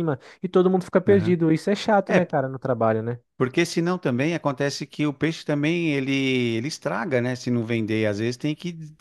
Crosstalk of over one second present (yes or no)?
no